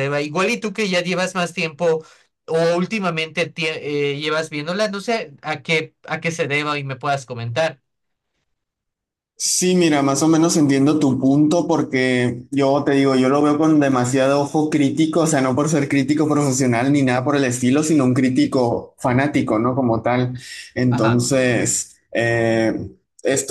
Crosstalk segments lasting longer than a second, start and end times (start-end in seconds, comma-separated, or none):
none